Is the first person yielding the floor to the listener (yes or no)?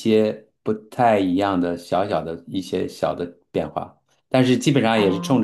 no